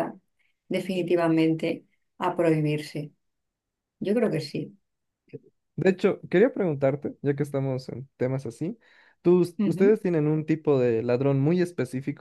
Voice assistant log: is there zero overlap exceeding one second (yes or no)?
yes